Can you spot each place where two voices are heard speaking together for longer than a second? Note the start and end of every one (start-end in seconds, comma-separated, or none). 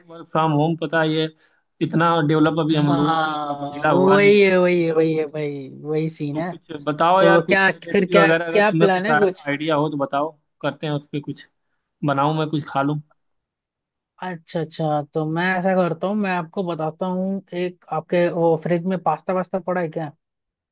2.7-4.5, 7.2-9.5